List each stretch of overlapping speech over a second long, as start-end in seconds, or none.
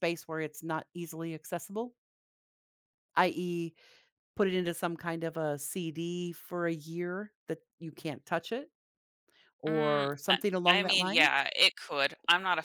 9.7-11.3